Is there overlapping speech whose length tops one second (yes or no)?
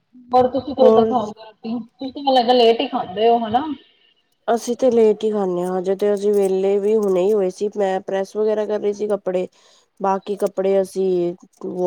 no